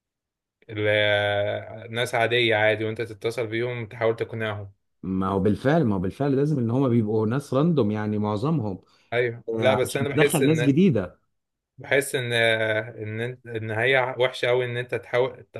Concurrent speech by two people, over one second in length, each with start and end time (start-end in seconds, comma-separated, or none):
9.5-10.7